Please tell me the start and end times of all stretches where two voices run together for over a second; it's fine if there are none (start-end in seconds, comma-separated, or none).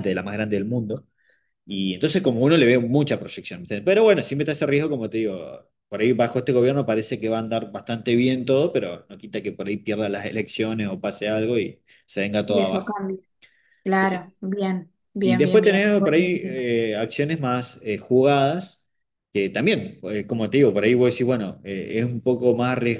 15.2-16.5